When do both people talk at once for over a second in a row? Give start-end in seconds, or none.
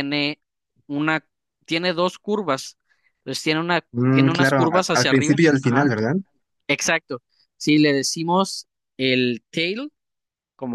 3.9-5.9